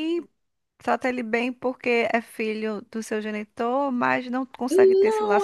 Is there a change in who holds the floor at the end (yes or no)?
yes